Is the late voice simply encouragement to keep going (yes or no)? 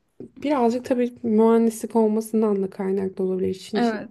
yes